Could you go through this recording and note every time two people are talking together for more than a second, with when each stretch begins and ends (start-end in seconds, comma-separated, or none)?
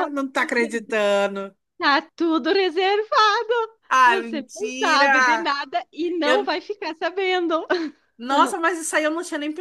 4.0-5.5